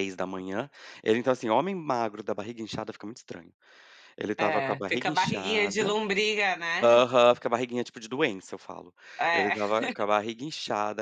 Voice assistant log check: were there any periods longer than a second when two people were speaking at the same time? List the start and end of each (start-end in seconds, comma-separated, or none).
4.4-6.0